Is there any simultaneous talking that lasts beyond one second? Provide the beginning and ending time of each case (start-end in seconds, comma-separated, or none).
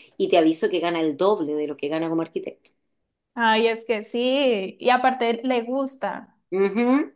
none